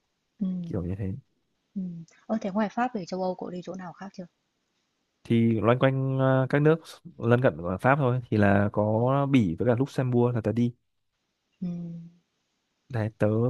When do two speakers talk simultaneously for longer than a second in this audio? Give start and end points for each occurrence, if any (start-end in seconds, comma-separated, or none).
none